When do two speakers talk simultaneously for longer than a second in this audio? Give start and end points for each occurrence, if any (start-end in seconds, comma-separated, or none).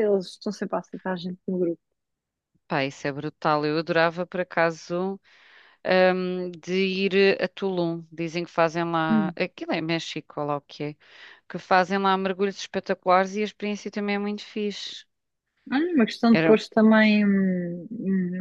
none